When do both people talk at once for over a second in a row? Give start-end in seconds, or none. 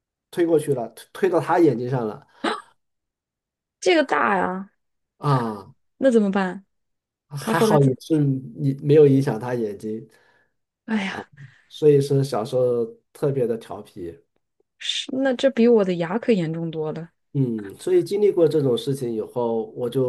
none